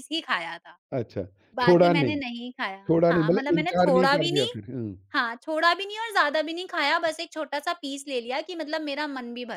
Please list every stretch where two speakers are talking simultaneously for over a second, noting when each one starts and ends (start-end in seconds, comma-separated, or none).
2.9-4.5